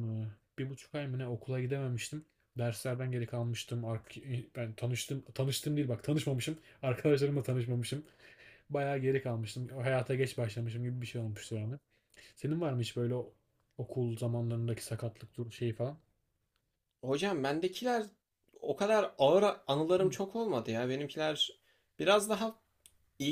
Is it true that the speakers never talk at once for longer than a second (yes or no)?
yes